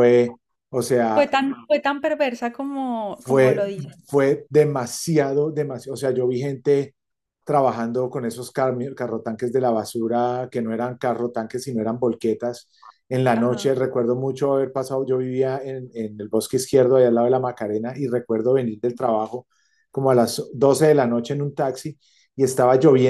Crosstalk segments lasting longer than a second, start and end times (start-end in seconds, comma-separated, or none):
none